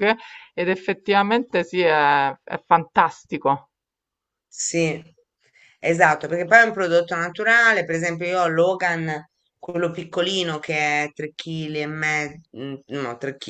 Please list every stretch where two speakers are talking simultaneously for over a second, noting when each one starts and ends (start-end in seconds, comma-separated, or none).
none